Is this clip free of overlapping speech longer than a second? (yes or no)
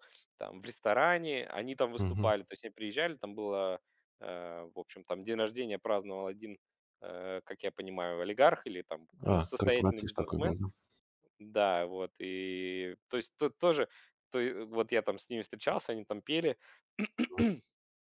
no